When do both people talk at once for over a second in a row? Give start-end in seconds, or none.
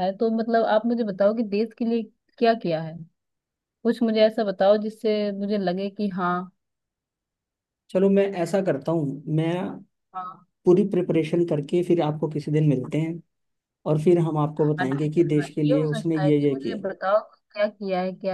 14.8-16.8